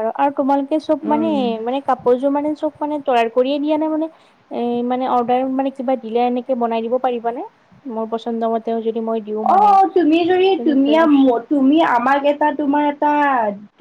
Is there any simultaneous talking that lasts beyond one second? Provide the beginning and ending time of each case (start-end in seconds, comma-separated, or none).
none